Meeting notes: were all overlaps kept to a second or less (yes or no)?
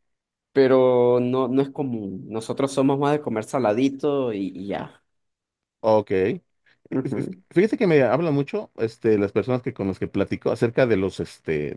yes